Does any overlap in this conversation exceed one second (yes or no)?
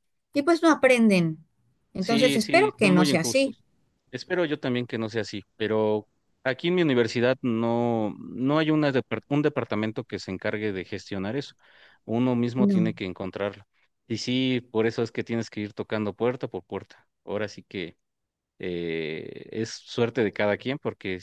yes